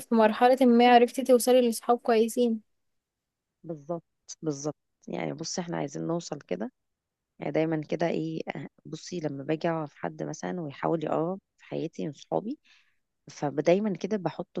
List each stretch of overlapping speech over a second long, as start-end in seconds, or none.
none